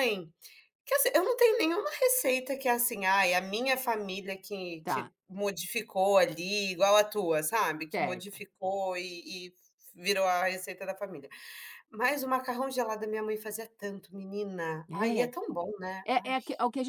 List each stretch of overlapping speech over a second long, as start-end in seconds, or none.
none